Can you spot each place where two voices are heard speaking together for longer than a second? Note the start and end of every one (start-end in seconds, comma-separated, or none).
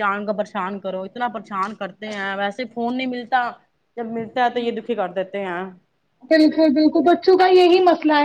none